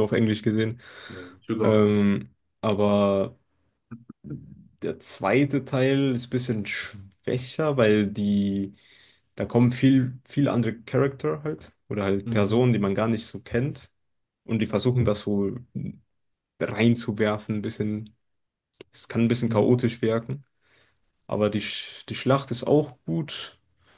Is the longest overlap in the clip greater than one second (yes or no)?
no